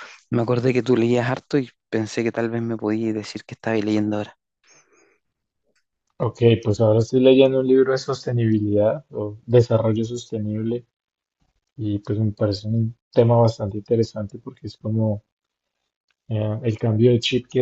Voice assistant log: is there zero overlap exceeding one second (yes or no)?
yes